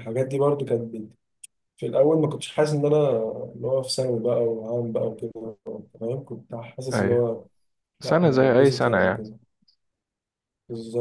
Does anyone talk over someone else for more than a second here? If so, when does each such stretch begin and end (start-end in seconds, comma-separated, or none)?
8.0-9.3